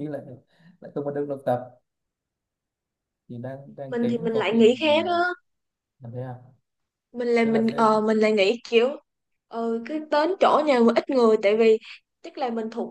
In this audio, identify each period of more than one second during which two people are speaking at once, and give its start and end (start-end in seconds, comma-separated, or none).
3.9-5.2